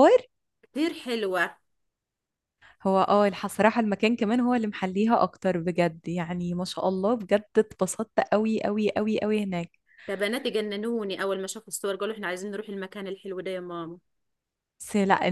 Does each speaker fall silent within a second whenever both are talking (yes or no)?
yes